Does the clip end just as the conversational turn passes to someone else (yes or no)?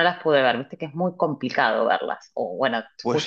yes